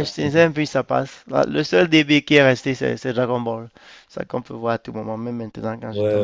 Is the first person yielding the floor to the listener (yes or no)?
yes